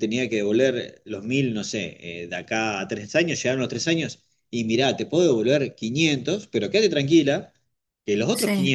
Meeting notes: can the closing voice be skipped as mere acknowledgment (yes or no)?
yes